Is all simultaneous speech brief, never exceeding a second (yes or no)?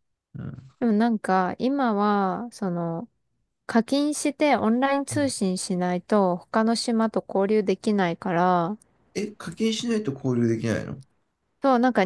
yes